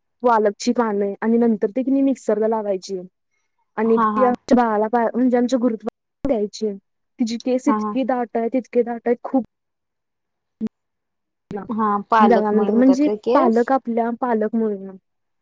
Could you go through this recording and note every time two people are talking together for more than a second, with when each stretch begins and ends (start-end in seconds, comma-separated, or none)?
12.3-13.7